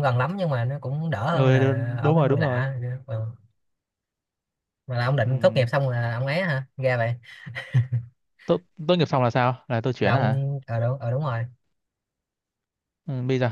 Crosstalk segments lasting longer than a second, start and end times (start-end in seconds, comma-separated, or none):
1.3-2.7